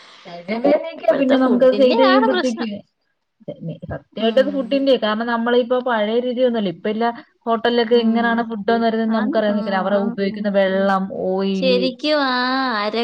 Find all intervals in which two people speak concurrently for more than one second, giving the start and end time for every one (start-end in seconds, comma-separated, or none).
1.0-2.7